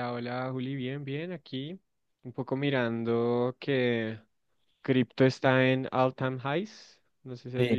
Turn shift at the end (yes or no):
yes